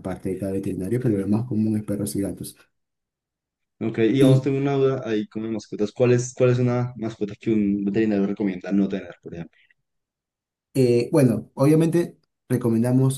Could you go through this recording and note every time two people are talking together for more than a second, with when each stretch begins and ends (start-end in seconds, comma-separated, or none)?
none